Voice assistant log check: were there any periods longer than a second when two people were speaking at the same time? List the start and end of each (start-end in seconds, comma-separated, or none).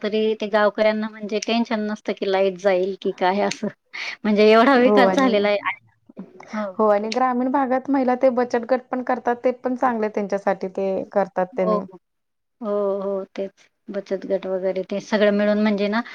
none